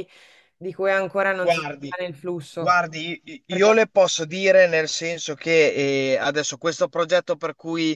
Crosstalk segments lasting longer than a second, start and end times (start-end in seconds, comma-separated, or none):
none